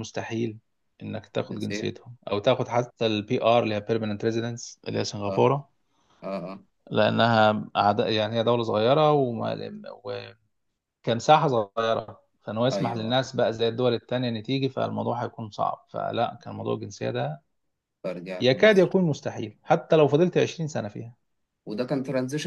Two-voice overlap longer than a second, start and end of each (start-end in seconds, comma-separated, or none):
none